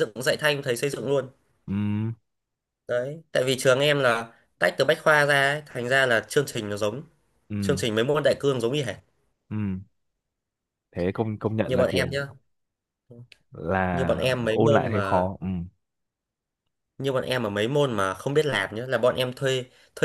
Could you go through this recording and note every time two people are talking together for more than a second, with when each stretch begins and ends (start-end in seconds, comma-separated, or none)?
13.9-15.3